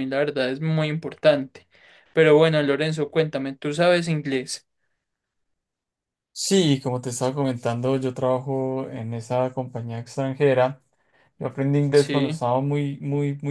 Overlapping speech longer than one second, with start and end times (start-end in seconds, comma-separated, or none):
none